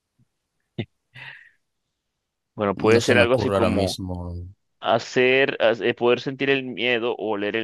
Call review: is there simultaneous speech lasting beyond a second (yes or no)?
yes